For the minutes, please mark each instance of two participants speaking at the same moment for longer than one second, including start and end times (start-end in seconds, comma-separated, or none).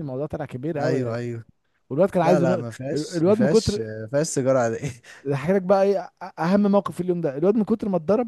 2.2-3.9